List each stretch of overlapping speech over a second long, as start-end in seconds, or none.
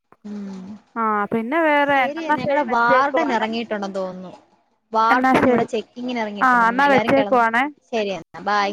1.9-3.5